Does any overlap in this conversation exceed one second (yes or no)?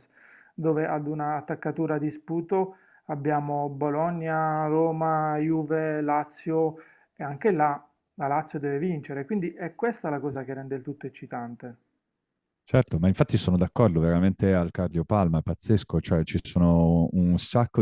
no